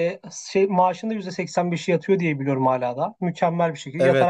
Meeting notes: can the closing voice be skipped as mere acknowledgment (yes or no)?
no